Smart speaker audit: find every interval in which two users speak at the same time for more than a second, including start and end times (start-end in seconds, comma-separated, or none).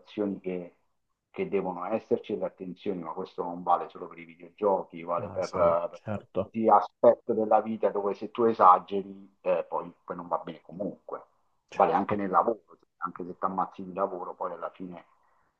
5.2-6.5